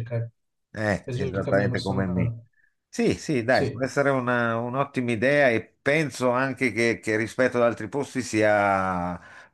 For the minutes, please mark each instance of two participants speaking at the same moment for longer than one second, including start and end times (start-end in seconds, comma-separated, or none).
1.0-2.3